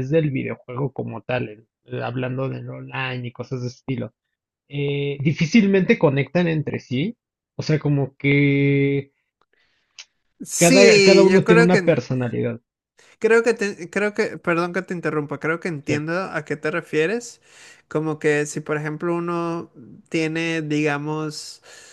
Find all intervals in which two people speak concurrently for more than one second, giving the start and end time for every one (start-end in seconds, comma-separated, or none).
10.6-12.0